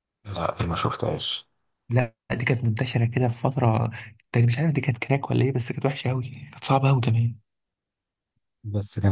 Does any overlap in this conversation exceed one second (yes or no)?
no